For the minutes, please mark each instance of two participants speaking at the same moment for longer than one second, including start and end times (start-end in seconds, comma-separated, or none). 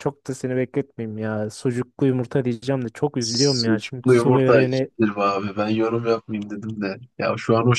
3.2-4.9